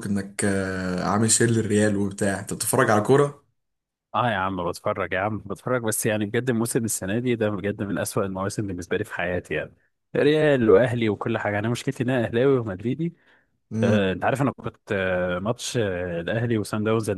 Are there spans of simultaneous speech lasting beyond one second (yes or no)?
no